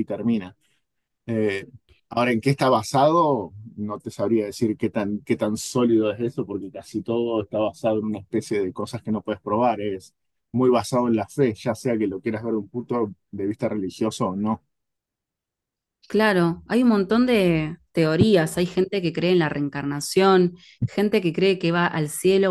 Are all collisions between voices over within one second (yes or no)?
yes